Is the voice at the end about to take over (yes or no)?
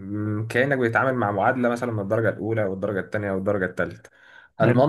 no